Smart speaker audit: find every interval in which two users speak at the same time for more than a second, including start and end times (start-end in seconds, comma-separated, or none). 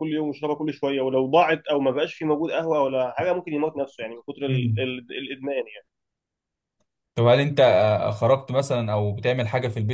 none